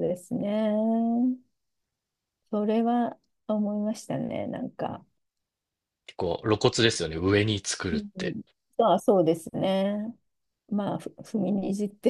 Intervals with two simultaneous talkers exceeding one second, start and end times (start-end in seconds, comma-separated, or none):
none